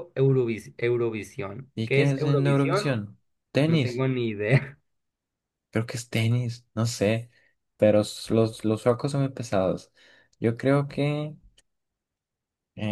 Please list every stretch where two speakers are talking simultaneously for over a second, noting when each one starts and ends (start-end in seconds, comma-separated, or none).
1.7-3.0